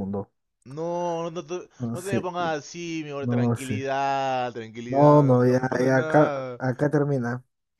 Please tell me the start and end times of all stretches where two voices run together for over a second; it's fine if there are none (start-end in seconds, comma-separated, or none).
4.9-6.6